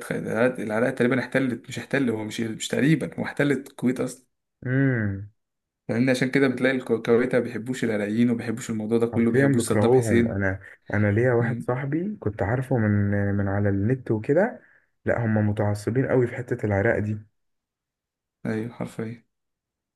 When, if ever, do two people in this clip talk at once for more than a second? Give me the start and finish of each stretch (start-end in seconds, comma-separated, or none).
9.1-10.4